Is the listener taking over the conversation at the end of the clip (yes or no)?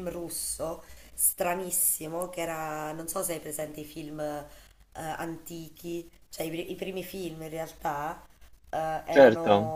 no